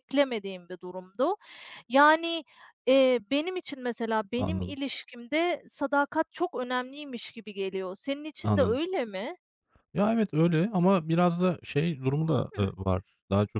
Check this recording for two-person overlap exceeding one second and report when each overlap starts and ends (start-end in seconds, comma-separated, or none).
none